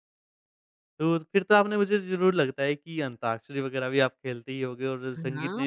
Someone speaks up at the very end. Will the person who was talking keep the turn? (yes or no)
yes